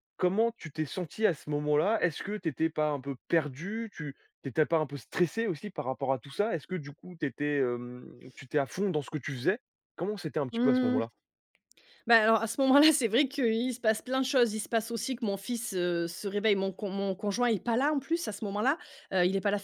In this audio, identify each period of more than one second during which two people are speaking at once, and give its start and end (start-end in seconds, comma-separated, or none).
none